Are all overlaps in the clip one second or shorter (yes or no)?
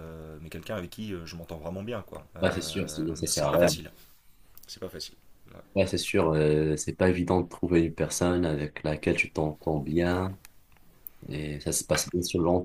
no